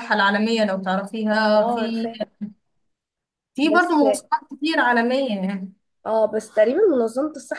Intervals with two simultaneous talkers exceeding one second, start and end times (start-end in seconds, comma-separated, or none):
none